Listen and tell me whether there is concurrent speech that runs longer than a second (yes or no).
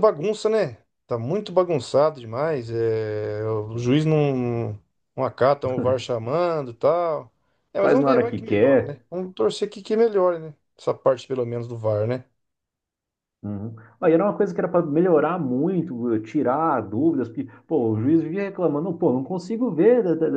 yes